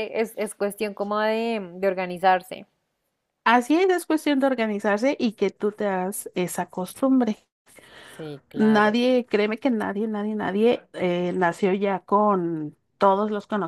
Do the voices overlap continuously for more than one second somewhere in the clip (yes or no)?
no